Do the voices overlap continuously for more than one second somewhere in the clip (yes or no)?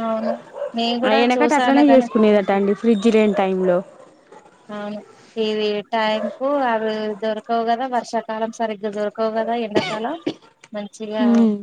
yes